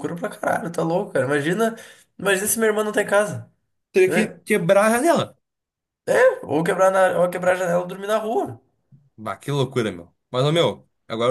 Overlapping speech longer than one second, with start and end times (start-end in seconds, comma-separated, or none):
none